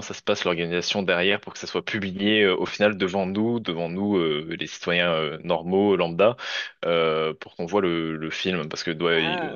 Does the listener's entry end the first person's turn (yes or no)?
yes